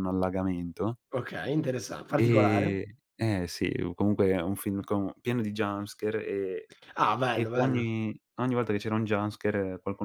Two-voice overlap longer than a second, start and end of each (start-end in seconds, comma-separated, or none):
none